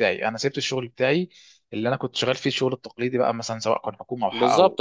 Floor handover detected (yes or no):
yes